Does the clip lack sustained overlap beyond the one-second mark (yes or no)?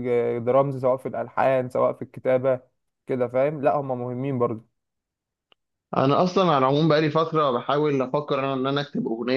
yes